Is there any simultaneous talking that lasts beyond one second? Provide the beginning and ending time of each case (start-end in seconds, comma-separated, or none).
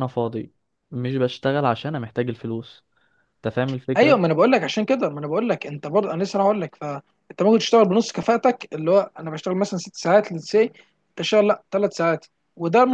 none